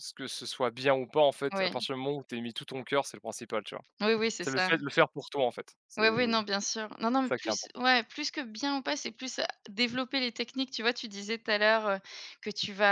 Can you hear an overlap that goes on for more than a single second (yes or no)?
no